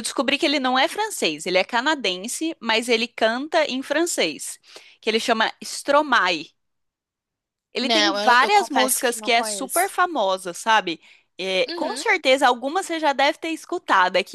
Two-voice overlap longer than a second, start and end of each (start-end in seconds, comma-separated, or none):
7.8-9.9